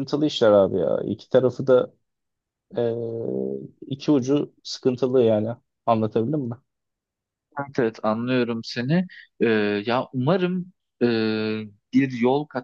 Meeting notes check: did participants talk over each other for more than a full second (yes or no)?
no